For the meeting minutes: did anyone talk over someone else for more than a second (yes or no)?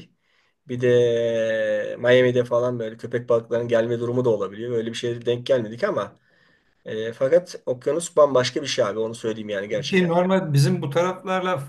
no